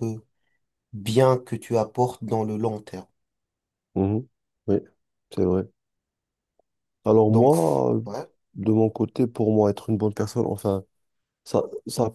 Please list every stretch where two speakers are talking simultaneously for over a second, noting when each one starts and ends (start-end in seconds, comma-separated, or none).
none